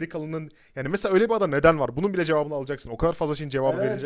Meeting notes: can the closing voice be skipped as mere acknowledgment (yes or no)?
no